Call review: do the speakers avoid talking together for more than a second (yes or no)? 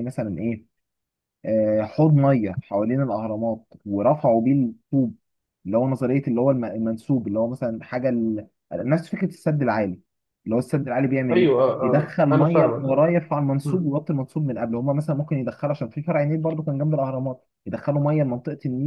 no